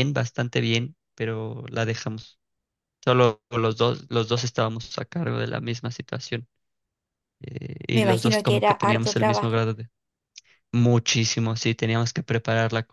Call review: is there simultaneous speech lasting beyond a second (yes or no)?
yes